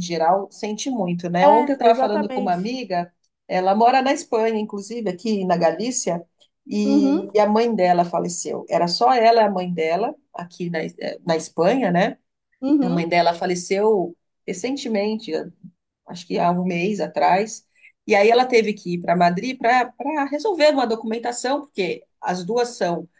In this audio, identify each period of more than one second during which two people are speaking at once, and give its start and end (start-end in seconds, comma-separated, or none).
1.4-2.7